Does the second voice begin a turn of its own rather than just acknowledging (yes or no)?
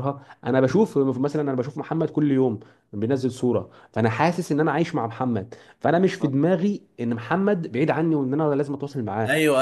yes